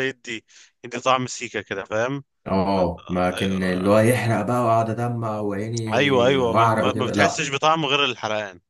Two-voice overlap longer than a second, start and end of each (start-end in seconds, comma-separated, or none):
5.9-7.5